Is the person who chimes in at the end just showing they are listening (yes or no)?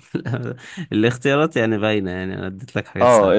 no